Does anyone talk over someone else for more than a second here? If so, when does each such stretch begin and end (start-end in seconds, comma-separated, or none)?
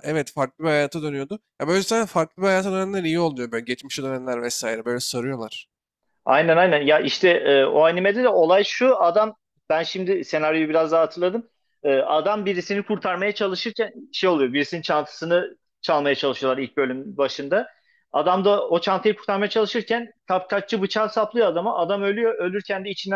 none